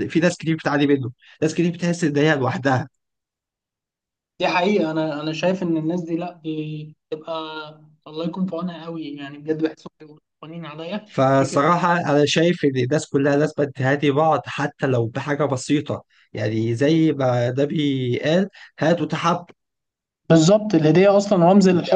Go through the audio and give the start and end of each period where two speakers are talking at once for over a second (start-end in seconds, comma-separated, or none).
none